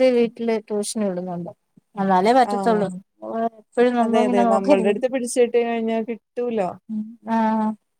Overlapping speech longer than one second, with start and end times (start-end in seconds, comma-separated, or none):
none